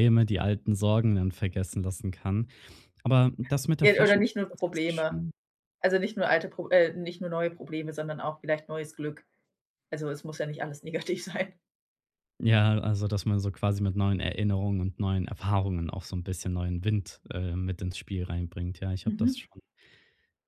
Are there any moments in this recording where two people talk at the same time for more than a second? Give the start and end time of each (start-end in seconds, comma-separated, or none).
3.8-5.2